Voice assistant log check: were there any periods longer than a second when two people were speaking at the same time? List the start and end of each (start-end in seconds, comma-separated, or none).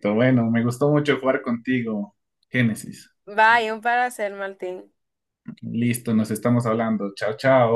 none